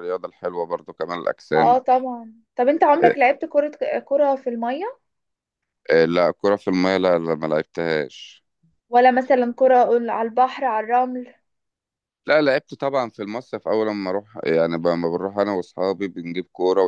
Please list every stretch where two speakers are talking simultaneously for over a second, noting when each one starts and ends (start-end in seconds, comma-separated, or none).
none